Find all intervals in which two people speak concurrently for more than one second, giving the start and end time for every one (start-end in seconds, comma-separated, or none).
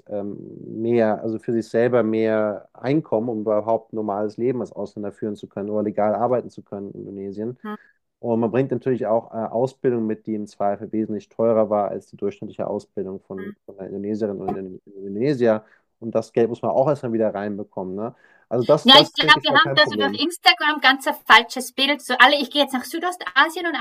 18.8-20.2